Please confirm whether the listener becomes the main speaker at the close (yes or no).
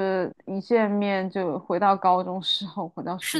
yes